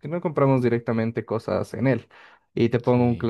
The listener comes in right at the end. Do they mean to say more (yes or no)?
no